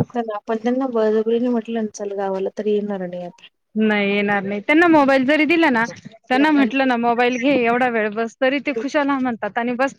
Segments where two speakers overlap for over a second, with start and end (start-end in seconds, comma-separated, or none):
none